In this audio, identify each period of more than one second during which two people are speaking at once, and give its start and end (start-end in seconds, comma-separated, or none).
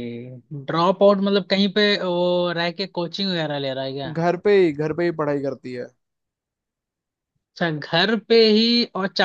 none